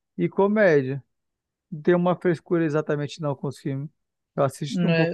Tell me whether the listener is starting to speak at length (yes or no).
yes